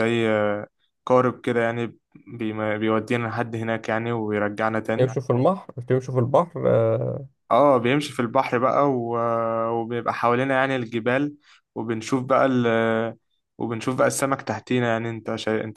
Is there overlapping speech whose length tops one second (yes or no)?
no